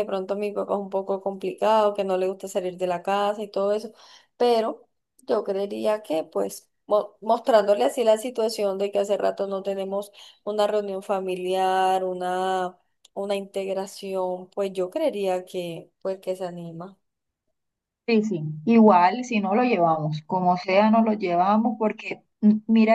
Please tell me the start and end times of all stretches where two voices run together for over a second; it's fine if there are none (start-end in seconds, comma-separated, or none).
none